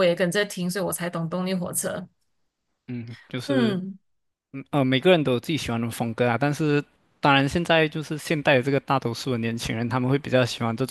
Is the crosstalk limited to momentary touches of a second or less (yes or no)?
yes